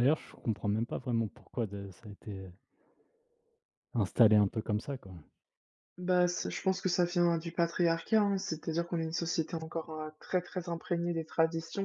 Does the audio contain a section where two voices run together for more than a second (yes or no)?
no